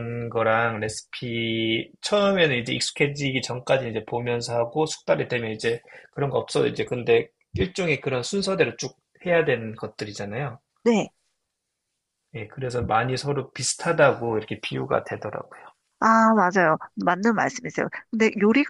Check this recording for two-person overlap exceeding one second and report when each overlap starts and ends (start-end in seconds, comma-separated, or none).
none